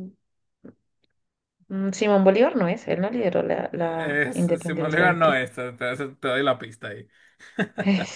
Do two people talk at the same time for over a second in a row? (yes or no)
yes